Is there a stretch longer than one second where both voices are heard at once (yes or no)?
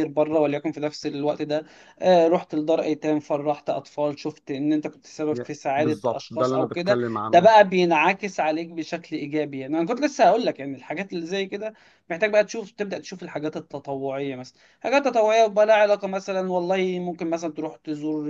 yes